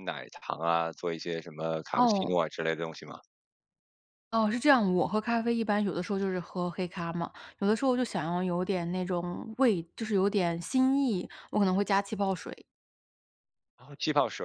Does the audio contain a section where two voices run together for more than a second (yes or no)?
no